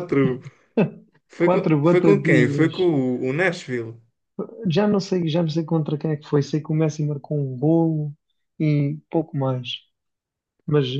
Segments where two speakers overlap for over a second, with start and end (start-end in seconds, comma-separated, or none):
1.4-2.9